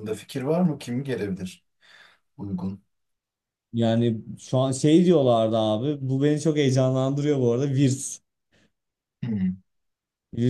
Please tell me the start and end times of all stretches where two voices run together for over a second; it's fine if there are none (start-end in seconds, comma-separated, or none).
none